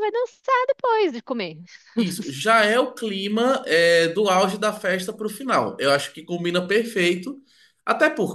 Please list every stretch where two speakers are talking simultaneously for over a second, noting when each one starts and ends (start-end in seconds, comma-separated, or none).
none